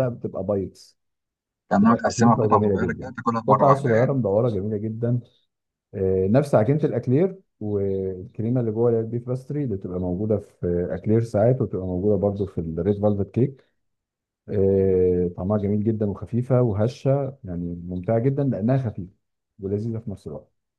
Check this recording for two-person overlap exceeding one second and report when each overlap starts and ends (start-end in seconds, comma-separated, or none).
1.8-4.2